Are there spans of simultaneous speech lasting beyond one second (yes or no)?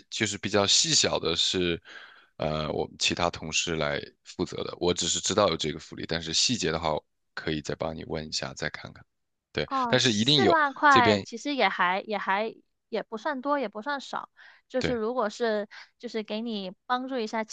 yes